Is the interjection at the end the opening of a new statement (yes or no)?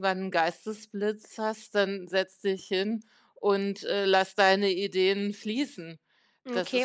yes